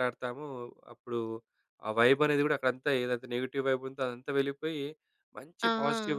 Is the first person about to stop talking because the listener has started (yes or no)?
no